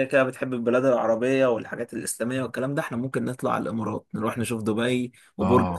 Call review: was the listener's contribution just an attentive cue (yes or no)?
no